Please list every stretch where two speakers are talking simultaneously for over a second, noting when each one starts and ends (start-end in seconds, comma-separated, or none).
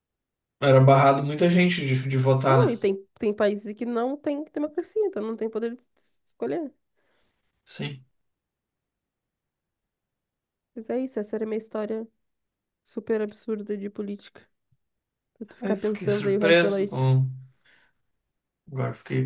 15.6-17.1